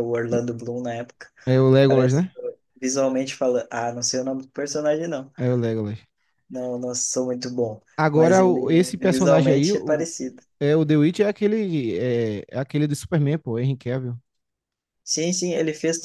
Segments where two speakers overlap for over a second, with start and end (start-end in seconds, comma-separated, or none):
8.0-10.1